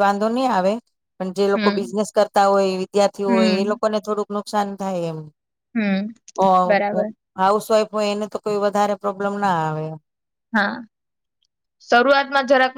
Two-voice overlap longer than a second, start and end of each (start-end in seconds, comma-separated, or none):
none